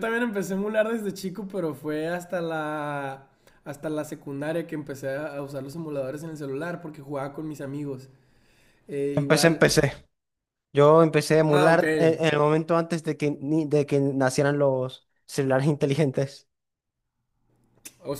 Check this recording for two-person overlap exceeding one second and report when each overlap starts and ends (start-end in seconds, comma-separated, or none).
none